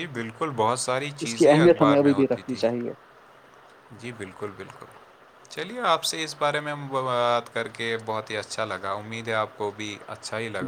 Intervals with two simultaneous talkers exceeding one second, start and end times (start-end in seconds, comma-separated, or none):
1.2-2.6